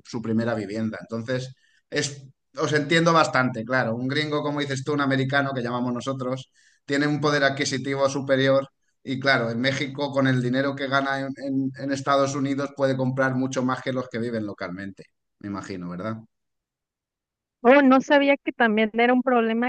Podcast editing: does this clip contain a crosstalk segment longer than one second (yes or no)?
no